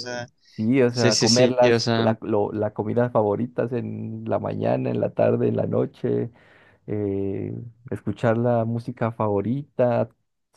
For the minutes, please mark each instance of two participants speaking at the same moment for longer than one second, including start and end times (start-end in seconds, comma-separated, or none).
0.9-2.1